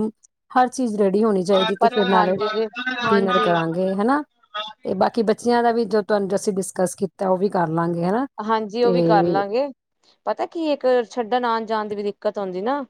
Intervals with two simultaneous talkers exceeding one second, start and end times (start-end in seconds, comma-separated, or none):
none